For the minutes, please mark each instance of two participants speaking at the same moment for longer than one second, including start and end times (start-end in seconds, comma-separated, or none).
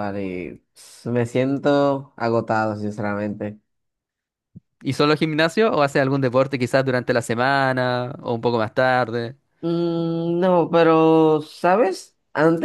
none